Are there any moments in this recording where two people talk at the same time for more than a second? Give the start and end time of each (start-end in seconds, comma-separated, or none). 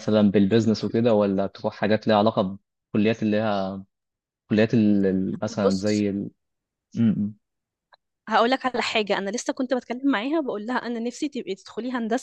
none